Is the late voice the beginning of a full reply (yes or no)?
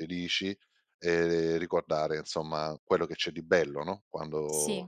no